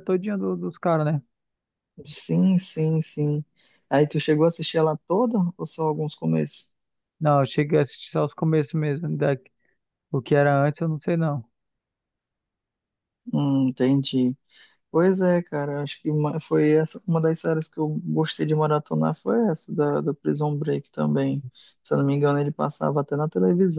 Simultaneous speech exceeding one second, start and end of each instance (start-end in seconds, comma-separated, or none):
none